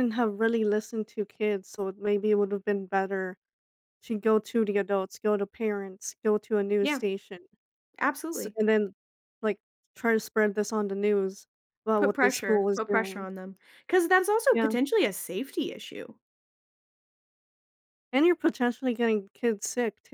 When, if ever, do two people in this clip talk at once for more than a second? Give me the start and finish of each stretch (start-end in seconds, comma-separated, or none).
12.0-13.3